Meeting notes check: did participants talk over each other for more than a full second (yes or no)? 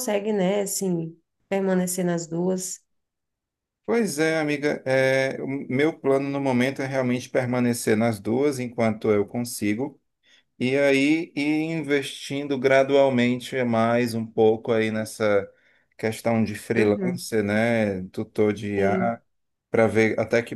no